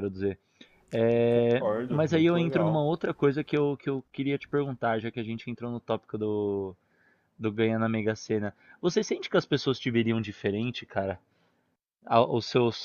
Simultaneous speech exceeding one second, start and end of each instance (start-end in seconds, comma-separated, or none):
1.3-2.9